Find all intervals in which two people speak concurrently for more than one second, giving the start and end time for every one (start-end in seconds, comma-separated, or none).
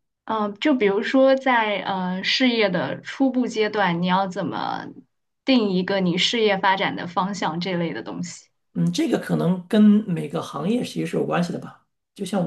none